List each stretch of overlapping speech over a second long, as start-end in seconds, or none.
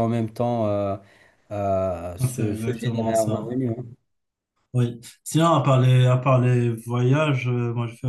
2.3-3.6